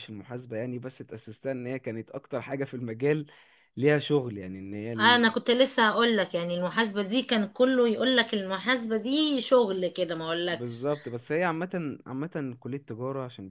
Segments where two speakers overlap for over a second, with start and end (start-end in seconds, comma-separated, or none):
none